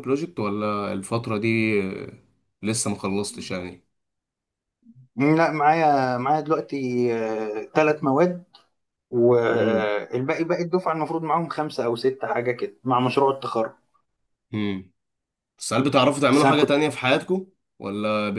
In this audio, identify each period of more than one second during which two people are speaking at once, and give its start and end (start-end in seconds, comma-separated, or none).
none